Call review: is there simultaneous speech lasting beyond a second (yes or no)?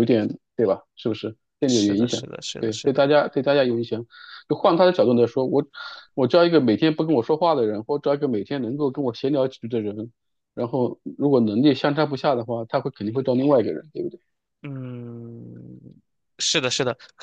yes